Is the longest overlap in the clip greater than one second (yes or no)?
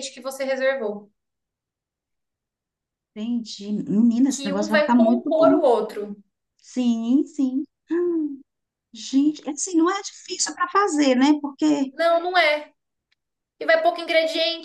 yes